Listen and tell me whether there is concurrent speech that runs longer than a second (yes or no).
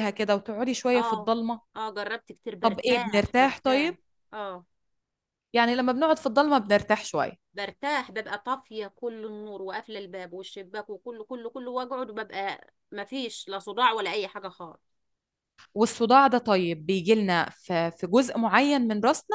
yes